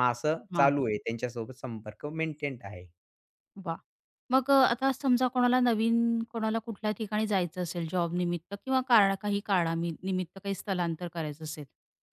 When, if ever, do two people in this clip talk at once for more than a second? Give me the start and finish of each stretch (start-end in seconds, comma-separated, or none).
none